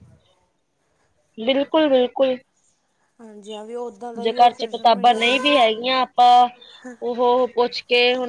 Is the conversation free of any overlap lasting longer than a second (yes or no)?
no